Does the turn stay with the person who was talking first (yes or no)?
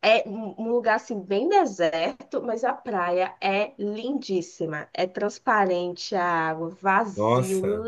yes